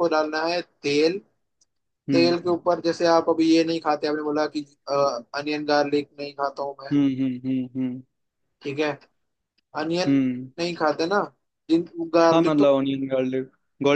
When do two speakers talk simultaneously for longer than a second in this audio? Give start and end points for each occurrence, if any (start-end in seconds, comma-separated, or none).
none